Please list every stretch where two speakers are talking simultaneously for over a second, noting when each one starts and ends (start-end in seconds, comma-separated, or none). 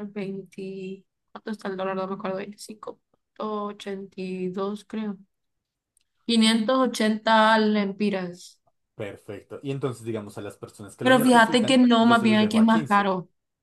11.0-13.1